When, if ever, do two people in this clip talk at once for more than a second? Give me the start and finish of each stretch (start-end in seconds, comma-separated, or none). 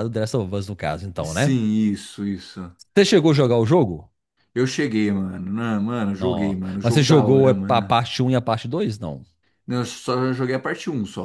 6.1-7.9